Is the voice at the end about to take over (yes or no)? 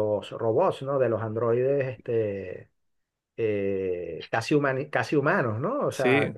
no